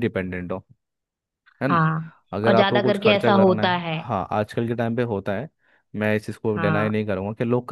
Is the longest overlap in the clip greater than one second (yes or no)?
yes